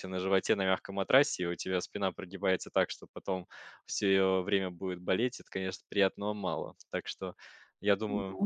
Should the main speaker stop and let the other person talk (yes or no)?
no